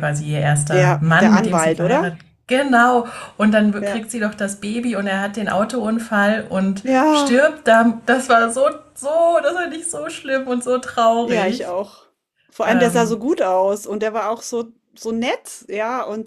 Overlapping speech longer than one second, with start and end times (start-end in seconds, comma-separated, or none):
0.7-2.1